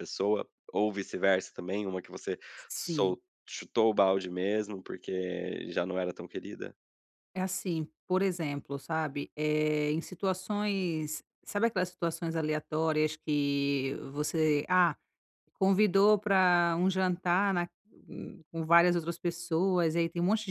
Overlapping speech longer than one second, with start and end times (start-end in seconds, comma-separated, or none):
none